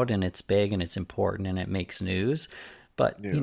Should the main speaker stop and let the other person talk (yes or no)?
no